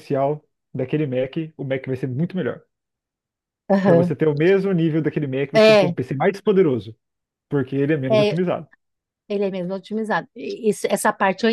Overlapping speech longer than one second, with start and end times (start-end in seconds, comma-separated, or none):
none